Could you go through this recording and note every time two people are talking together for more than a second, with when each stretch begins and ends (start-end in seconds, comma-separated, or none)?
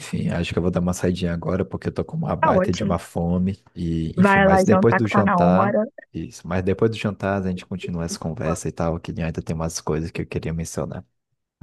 4.2-5.8